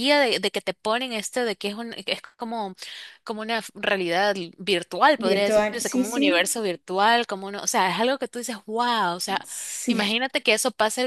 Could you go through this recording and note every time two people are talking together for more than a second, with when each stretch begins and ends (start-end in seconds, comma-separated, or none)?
5.2-6.5